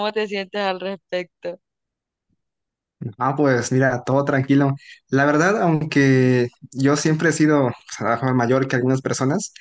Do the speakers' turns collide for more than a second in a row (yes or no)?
no